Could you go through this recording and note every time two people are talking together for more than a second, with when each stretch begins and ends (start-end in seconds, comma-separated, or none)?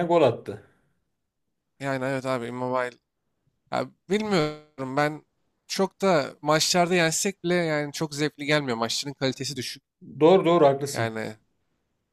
none